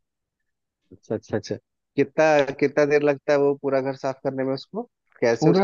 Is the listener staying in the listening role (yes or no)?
no